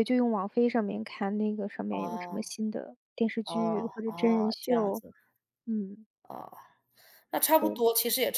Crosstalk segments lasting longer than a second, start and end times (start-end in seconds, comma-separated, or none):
3.4-5.0